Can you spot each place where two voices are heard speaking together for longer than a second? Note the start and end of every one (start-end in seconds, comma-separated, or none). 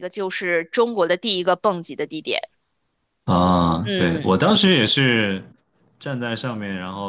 none